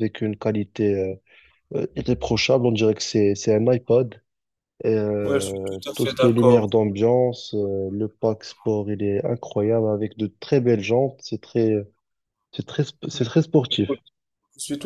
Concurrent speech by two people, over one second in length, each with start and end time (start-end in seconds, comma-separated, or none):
5.2-6.7